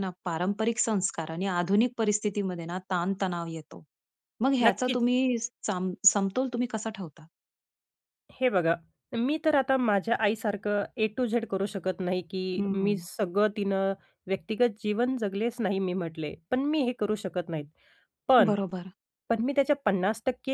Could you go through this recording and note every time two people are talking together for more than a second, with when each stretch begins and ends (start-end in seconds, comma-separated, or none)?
none